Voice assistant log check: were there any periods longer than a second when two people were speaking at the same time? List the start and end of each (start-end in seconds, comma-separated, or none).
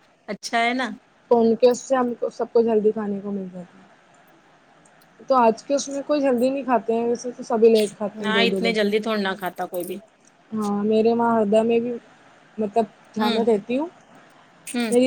none